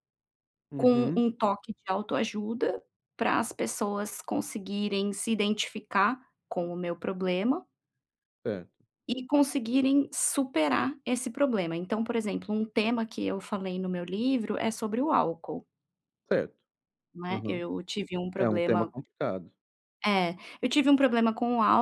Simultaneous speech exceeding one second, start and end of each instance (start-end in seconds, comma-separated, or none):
none